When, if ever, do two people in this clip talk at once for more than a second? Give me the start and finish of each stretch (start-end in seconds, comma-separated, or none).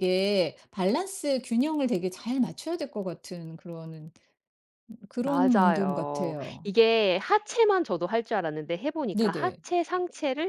5.2-6.7